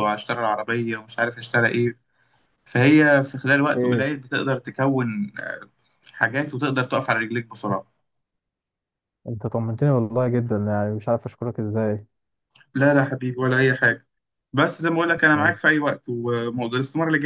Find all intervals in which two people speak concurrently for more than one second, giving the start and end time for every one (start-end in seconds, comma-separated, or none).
none